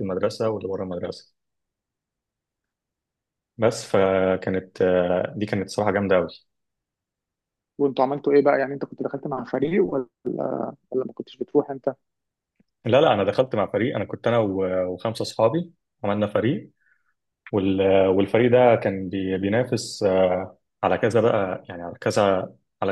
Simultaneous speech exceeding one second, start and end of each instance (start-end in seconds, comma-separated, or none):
none